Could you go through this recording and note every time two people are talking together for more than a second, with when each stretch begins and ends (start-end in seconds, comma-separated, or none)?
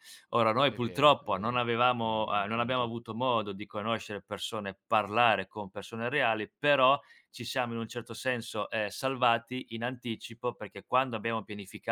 0.6-2.9